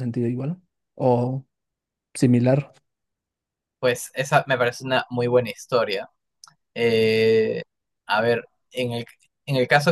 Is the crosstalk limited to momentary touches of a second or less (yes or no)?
yes